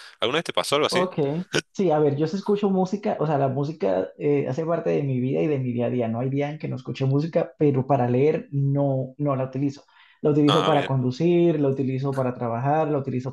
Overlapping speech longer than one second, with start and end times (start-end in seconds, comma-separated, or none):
none